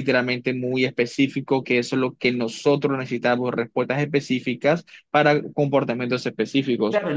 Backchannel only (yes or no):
no